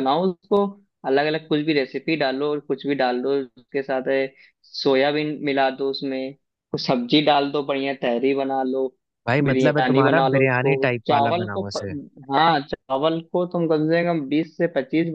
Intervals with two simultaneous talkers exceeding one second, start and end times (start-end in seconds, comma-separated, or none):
9.4-11.8